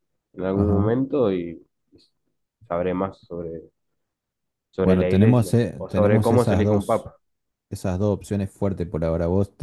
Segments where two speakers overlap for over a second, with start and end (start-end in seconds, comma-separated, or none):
4.8-7.1